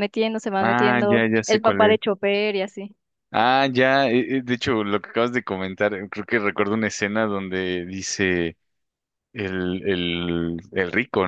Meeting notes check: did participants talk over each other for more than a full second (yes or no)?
yes